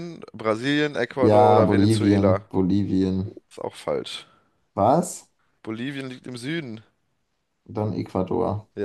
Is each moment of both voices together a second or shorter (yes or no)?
no